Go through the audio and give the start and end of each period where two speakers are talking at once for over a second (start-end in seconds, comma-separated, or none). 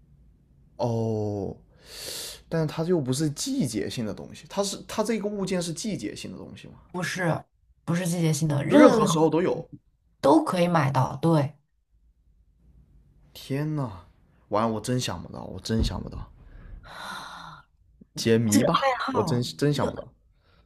18.5-20.1